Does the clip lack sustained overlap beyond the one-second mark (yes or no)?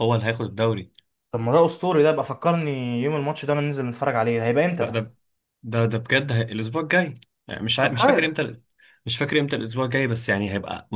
yes